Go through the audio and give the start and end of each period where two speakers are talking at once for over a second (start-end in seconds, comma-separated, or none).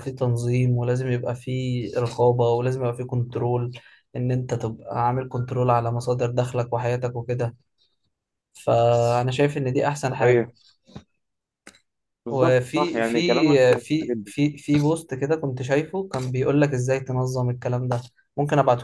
12.3-14.3